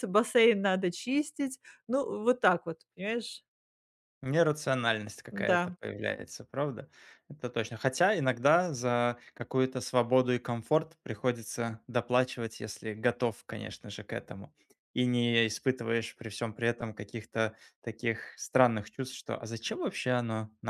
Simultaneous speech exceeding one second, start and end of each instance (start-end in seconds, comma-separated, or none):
none